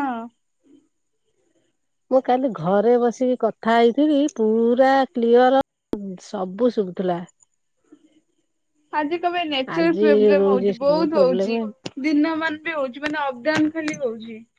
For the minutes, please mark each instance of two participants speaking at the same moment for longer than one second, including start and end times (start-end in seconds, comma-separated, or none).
9.8-11.6